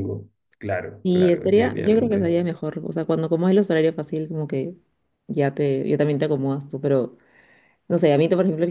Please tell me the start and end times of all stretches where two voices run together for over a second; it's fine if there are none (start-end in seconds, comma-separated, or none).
1.0-2.3